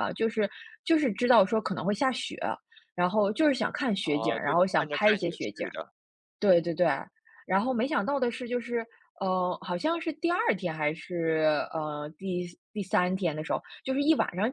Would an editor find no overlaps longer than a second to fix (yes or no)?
no